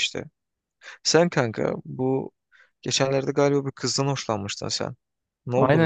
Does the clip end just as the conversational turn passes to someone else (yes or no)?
yes